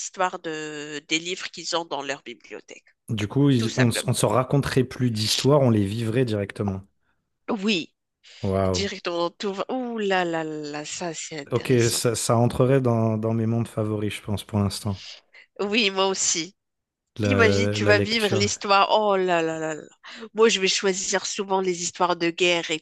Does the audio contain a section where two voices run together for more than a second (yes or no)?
yes